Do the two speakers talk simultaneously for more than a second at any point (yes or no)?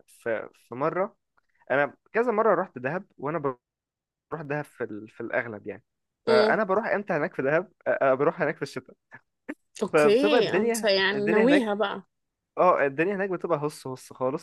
yes